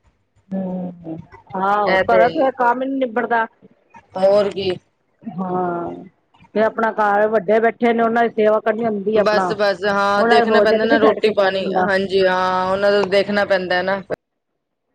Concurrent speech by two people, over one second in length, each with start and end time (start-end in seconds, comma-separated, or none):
10.2-11.8